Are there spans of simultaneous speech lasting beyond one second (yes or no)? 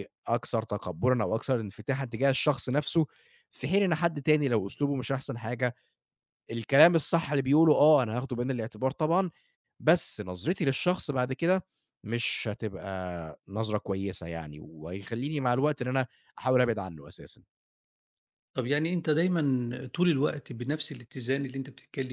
no